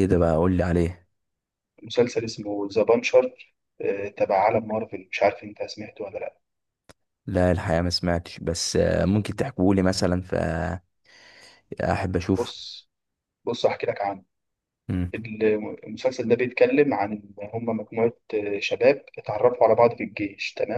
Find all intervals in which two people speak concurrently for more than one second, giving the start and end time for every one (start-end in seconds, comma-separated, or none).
none